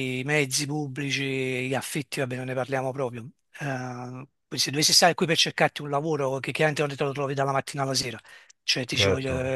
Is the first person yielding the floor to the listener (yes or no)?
yes